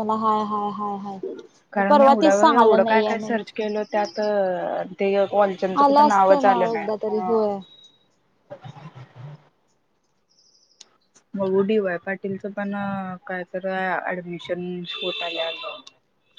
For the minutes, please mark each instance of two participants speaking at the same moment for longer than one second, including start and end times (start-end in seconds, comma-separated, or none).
1.7-3.4, 5.8-7.4